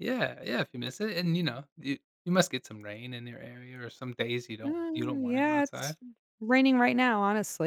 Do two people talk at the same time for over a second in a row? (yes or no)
yes